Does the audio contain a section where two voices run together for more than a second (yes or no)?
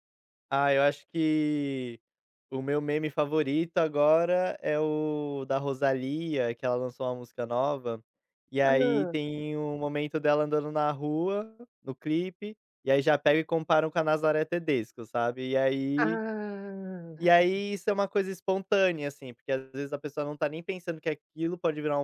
no